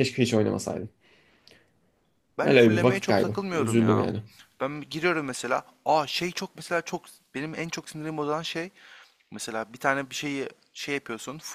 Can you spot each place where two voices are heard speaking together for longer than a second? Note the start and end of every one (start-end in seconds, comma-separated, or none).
2.4-4.1